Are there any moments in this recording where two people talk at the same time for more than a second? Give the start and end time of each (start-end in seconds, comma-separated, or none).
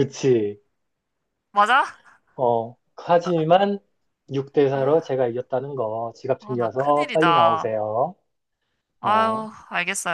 6.4-7.7